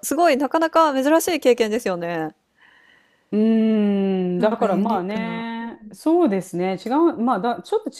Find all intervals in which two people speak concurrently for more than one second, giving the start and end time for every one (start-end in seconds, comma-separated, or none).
4.4-6.0